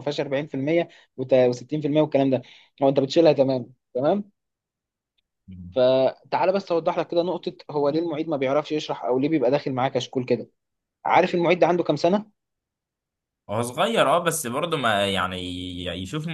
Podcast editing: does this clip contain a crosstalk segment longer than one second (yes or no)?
no